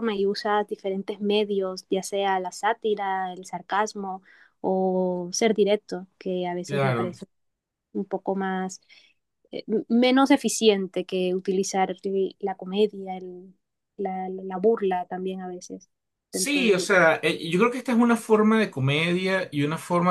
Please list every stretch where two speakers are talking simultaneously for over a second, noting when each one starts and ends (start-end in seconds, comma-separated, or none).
none